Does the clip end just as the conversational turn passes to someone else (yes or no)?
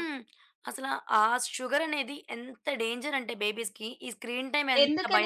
yes